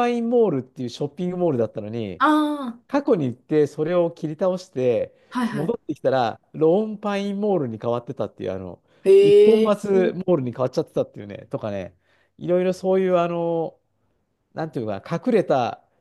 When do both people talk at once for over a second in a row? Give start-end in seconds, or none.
none